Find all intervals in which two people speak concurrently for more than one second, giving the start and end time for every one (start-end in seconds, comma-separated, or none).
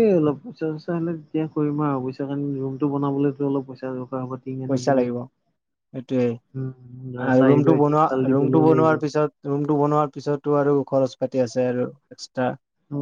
7.3-8.9